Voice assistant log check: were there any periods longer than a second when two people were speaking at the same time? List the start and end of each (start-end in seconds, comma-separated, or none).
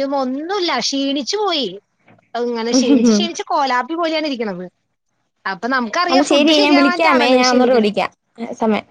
6.1-7.9